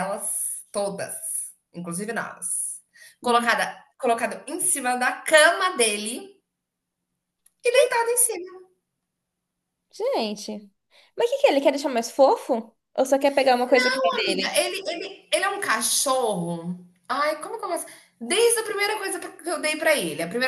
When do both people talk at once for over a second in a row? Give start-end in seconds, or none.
none